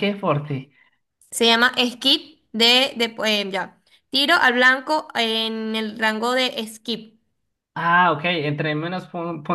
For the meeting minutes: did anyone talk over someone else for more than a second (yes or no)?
no